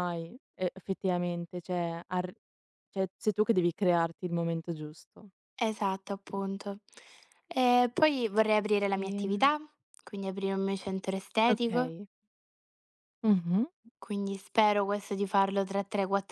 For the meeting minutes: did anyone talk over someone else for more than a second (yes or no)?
no